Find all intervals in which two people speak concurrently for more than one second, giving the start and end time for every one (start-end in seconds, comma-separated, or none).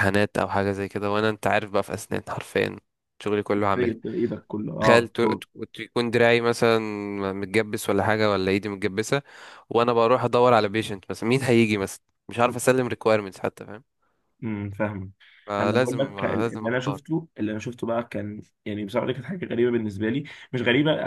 15.6-17.0